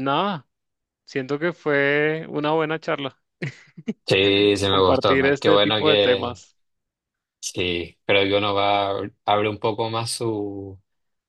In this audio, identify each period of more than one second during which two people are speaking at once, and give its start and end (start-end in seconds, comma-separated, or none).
4.7-6.4